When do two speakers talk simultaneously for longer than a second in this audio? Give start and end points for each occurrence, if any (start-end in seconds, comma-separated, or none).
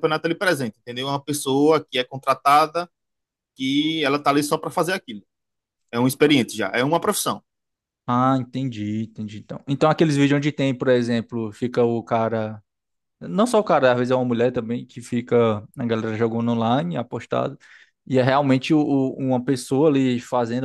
none